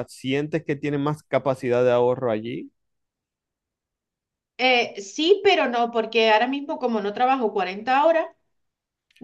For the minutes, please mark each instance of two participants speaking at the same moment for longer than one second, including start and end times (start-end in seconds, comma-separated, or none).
none